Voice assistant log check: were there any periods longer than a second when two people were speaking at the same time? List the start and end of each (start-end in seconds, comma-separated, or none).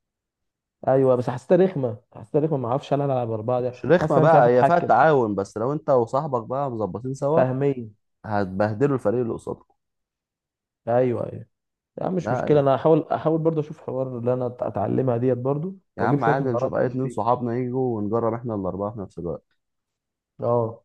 3.6-4.9, 16.0-17.3